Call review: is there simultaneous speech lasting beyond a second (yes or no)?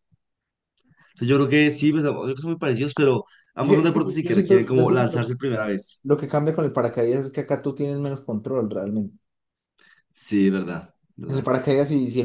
yes